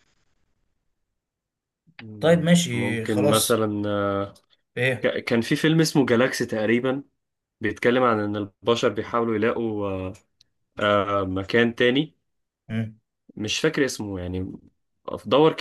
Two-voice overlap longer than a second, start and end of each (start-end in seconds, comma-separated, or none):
2.2-3.6